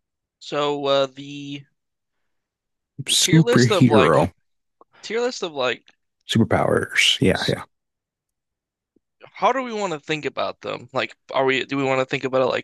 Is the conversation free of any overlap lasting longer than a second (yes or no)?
no